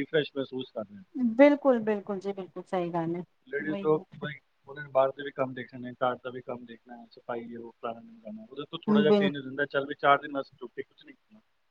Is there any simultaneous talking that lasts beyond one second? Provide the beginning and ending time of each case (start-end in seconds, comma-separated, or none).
none